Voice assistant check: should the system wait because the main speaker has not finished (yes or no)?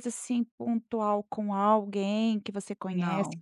yes